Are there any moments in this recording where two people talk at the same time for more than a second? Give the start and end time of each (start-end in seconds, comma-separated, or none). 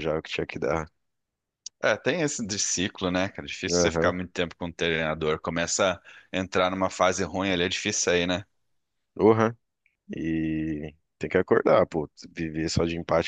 none